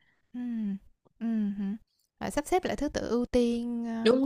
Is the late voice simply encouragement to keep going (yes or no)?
no